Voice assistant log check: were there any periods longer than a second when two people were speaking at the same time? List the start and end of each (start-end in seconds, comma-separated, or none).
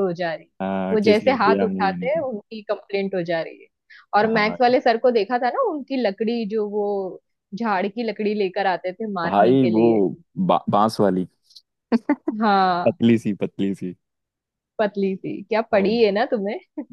0.9-2.2